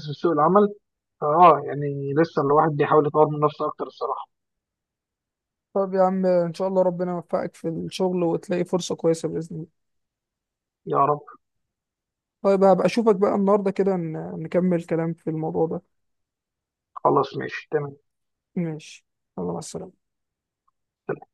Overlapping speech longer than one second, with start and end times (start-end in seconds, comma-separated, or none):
none